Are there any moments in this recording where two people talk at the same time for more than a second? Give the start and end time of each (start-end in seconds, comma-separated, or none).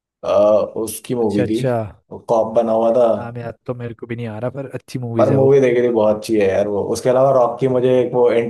none